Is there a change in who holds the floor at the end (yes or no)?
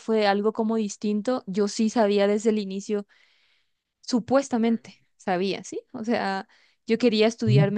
no